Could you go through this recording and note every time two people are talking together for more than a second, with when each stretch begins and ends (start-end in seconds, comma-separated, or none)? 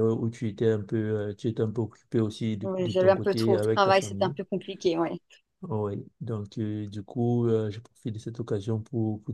2.6-4.4